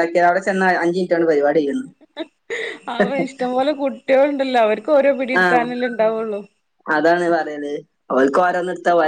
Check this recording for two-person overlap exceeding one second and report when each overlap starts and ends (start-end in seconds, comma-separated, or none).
none